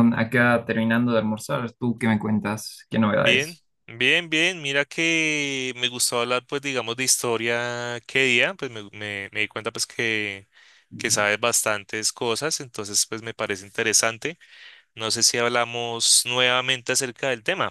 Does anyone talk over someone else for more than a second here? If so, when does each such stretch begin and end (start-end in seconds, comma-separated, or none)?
none